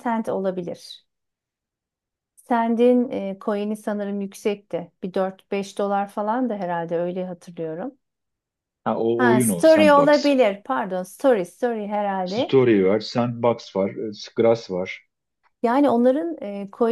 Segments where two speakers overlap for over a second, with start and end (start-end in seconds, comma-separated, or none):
9.2-10.4